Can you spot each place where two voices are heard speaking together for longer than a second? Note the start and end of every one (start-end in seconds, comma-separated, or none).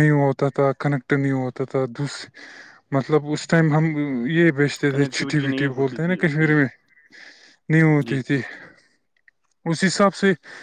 4.9-6.5